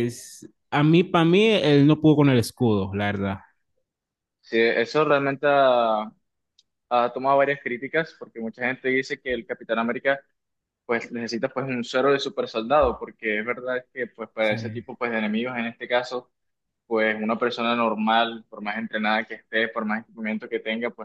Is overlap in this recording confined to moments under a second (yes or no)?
yes